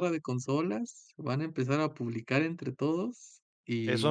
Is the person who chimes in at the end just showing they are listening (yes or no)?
no